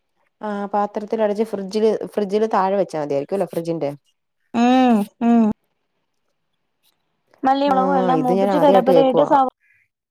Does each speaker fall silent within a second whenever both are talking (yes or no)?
no